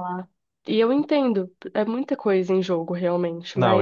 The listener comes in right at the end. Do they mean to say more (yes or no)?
yes